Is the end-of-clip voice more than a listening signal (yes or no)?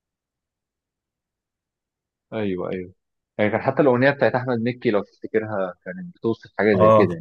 yes